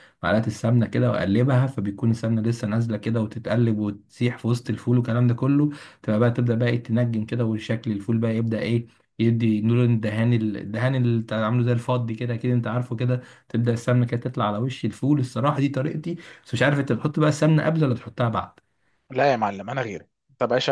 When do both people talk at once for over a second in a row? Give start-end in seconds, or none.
none